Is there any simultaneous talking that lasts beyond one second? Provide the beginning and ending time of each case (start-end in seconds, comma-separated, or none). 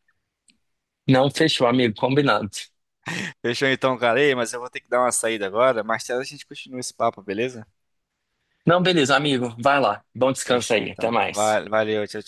10.4-11.7